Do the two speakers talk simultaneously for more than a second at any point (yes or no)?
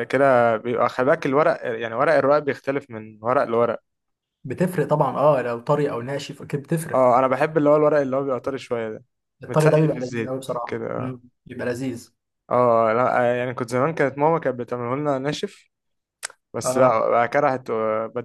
yes